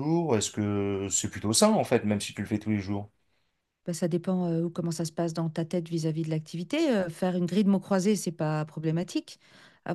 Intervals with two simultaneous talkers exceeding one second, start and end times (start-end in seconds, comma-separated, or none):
none